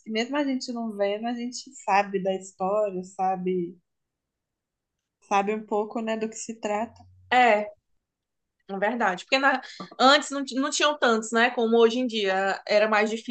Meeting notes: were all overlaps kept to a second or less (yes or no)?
yes